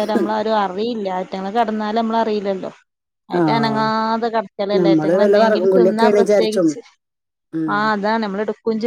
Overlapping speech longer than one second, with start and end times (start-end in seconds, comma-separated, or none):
4.8-6.7